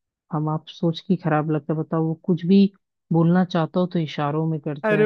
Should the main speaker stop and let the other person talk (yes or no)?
yes